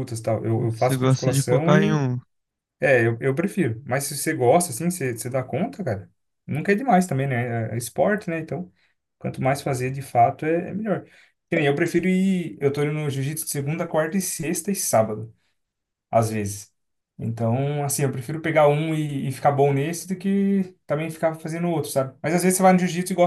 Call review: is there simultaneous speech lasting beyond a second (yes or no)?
yes